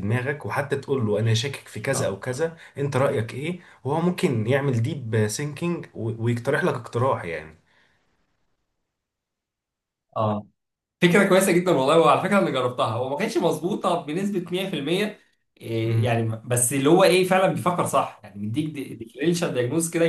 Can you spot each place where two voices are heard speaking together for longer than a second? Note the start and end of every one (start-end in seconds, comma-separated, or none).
none